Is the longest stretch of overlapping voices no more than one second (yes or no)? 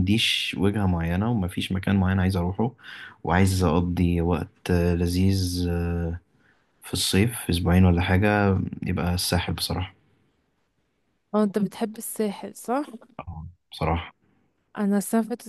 yes